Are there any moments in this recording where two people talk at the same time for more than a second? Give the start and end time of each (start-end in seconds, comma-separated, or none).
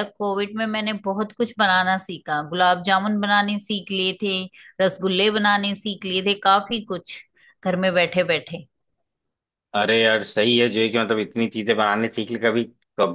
none